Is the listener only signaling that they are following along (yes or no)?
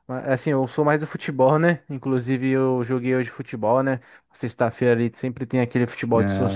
yes